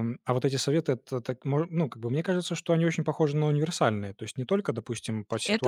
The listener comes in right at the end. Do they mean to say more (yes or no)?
no